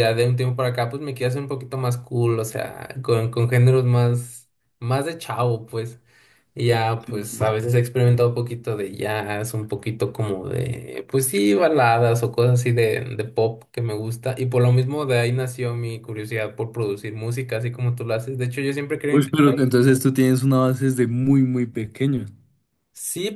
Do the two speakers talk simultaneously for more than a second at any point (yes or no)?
no